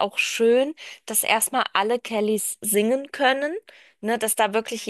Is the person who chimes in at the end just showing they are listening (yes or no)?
yes